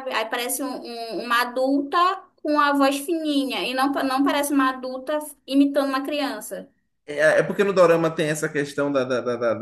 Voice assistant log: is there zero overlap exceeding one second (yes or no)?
yes